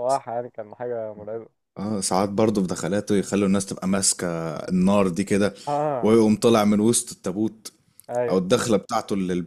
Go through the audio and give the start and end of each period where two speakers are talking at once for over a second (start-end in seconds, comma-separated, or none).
none